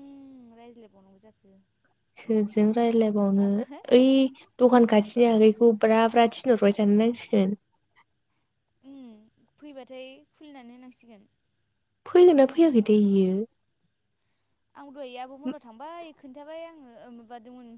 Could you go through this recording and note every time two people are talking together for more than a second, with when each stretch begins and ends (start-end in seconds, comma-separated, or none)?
none